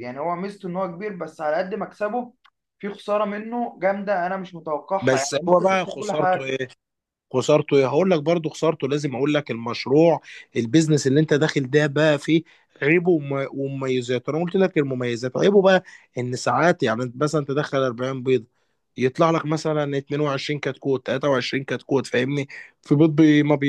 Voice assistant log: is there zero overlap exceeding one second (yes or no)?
no